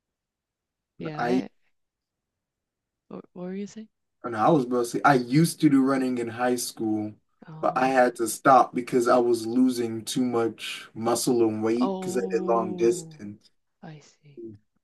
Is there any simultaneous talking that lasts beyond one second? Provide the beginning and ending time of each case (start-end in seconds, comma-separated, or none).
11.8-13.2